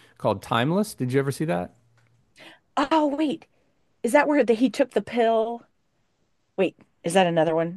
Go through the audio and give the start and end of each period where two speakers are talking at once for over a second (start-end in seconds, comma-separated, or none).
none